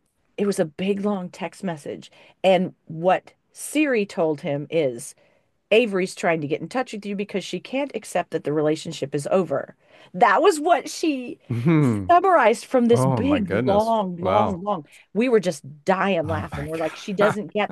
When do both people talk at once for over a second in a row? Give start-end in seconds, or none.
12.9-14.6